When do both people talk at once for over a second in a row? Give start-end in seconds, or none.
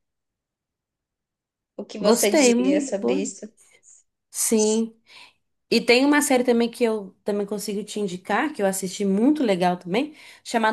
2.0-3.2